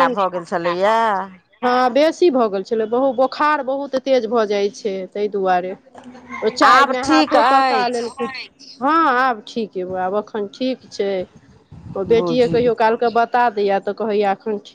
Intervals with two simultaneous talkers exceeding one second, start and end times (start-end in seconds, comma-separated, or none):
6.7-8.2